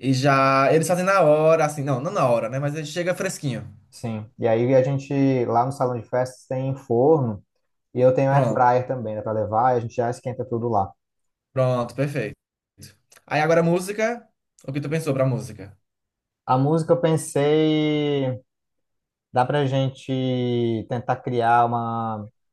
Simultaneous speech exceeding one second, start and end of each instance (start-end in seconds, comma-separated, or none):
none